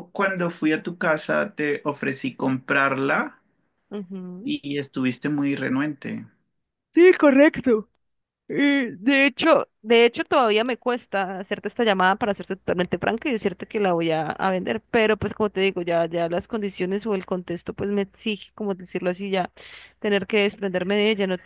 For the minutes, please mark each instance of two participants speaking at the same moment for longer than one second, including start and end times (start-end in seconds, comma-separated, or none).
none